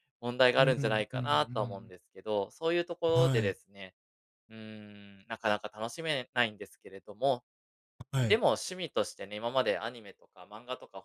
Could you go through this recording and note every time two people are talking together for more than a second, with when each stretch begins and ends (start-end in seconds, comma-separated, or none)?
0.5-1.9